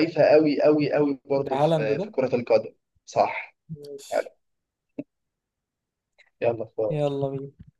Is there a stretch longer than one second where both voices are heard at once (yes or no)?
no